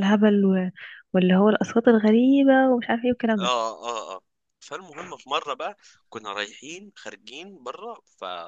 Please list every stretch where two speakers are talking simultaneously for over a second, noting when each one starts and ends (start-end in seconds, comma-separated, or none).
none